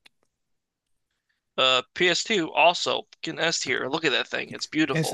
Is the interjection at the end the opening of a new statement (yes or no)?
yes